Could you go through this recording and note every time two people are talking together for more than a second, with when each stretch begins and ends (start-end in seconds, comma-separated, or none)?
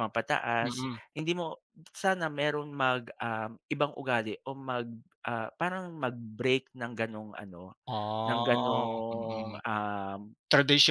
8.3-9.6